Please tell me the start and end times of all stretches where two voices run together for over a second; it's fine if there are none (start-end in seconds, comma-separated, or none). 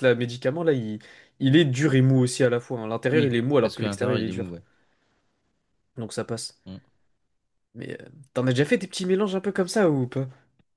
3.1-4.5